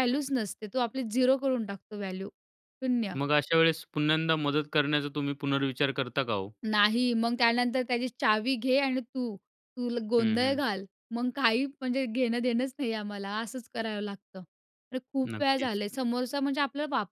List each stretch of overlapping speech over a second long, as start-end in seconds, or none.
none